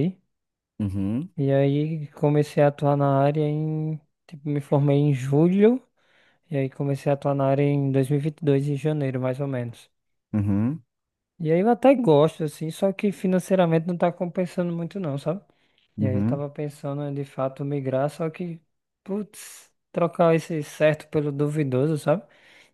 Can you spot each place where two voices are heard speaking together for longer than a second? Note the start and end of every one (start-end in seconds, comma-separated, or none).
none